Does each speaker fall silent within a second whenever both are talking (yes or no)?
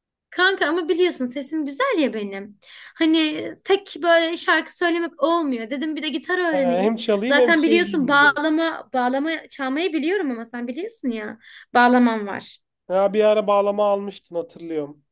no